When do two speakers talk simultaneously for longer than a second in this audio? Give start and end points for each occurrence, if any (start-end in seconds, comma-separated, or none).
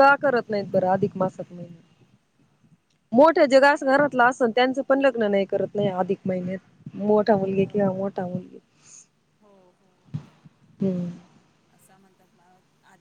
none